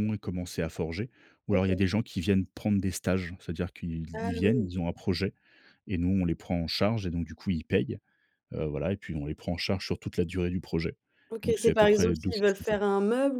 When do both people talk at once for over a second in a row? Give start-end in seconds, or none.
11.4-12.8